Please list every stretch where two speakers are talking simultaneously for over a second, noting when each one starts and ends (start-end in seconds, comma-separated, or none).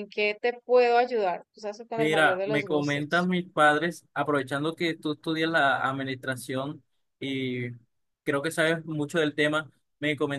1.9-3.3